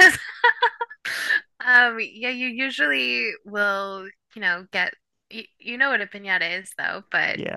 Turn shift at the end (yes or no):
yes